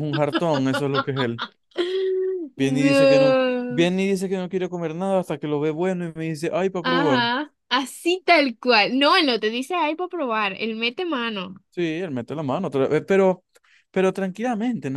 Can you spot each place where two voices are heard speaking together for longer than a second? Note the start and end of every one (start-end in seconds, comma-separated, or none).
2.5-3.9